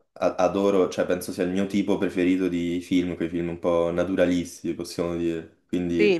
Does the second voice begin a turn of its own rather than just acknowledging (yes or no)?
yes